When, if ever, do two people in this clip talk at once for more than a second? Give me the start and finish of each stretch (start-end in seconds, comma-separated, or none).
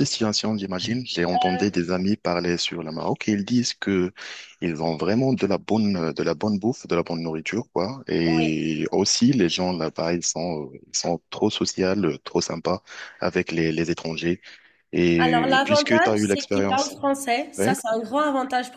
15.3-16.9